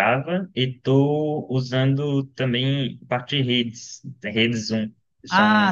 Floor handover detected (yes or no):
yes